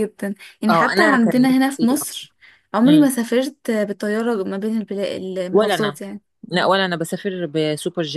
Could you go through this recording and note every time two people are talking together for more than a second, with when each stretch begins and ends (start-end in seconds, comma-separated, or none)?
0.7-2.1